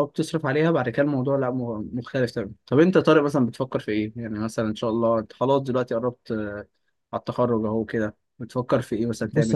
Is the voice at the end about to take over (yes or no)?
yes